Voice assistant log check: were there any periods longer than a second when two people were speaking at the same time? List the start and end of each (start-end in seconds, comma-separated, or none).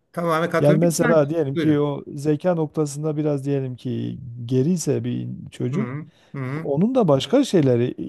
0.6-1.9